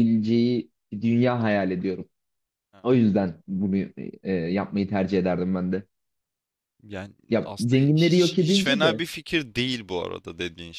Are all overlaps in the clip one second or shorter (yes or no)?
no